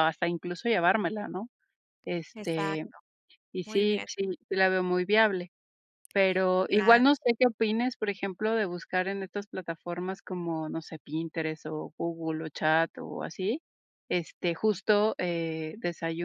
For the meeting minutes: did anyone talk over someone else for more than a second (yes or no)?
no